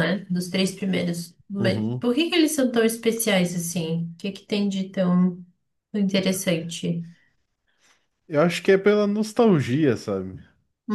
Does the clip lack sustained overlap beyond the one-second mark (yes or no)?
yes